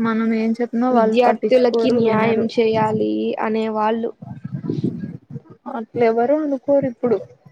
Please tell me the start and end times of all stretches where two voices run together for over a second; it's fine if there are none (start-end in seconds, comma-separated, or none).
0.9-2.5